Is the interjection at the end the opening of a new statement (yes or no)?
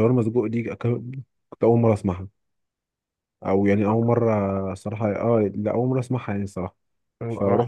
no